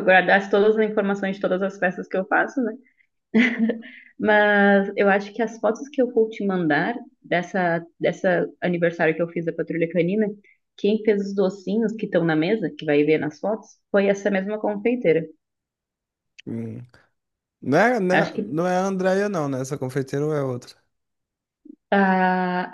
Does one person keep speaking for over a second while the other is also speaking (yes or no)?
no